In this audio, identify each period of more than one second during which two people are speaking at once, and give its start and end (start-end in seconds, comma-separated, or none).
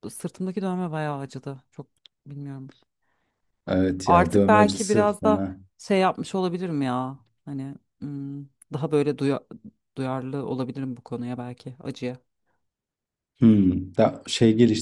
4.0-5.6